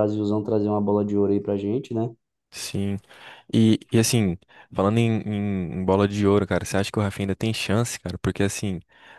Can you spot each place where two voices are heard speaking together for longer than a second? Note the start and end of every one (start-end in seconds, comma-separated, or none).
none